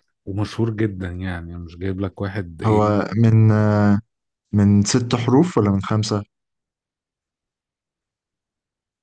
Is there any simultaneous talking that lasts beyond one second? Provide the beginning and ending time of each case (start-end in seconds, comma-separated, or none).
none